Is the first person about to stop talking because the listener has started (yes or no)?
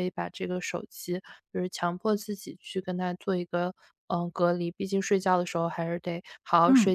yes